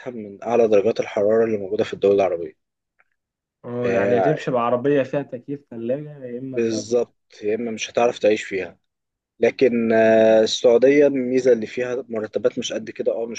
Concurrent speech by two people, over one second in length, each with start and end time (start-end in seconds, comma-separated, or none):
none